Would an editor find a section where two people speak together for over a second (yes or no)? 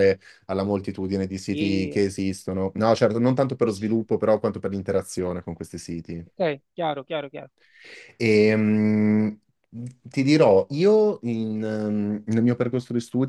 no